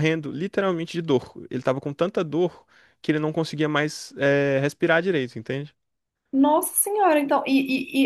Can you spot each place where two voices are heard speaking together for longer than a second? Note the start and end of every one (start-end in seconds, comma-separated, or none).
none